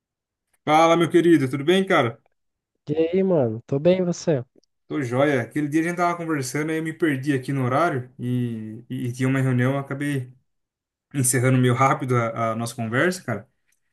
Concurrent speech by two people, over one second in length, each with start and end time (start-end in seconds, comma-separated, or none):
none